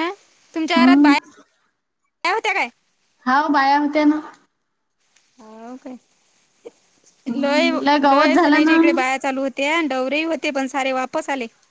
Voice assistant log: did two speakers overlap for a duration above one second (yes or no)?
yes